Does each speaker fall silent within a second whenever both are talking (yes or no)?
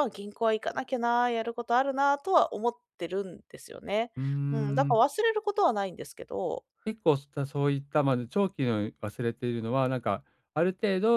yes